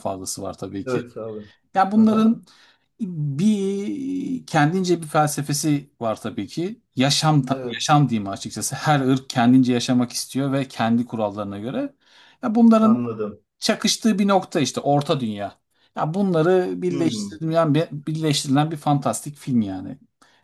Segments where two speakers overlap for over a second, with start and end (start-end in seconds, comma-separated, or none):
none